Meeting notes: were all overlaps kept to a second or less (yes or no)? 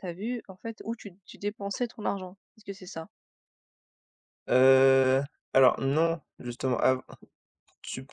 yes